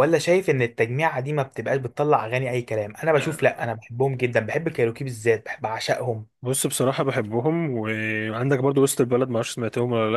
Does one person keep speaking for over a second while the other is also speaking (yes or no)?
no